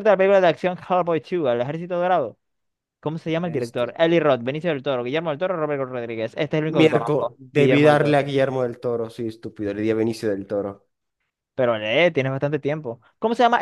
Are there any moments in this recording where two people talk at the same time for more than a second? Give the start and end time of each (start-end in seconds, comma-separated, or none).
6.8-8.2